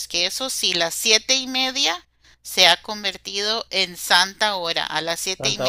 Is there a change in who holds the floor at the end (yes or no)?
no